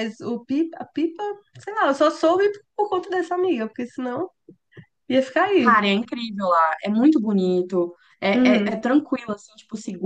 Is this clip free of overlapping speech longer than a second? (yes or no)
yes